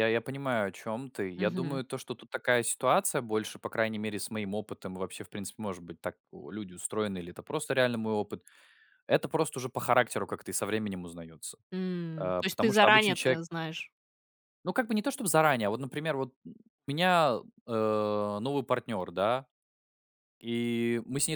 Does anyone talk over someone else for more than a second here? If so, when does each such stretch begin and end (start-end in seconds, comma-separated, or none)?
12.2-13.4